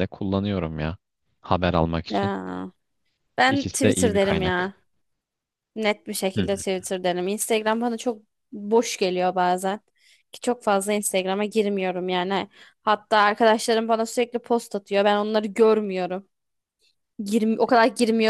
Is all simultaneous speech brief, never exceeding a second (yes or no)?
no